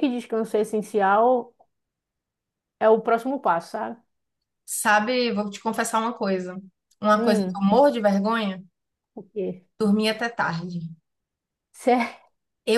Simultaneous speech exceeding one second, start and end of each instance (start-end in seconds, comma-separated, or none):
none